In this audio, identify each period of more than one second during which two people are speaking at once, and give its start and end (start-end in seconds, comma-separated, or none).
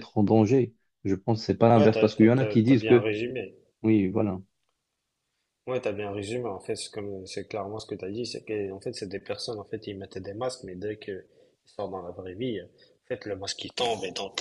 1.8-3.1